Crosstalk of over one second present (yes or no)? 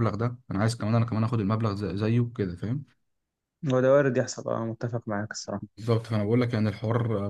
no